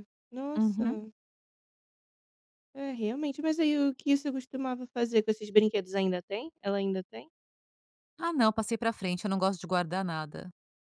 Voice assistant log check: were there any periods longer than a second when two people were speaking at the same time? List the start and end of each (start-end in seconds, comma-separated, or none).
none